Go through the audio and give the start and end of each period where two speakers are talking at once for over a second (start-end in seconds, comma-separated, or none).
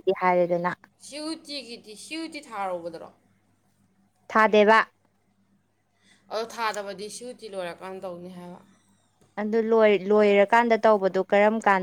none